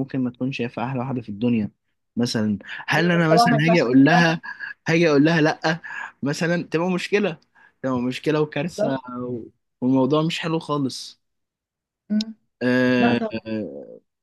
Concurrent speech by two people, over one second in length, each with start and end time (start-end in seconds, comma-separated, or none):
3.0-4.3